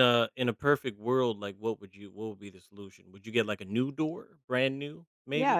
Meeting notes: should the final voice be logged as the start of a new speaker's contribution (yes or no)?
yes